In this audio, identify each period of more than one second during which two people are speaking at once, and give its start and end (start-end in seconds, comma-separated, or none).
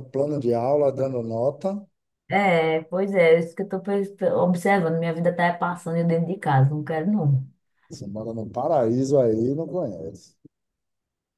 none